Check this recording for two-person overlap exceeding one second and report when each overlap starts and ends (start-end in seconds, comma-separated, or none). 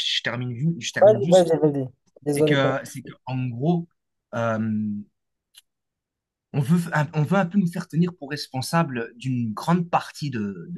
none